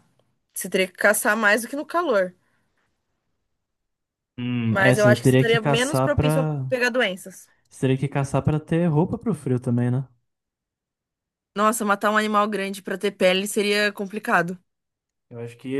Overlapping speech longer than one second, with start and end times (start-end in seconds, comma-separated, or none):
4.7-6.6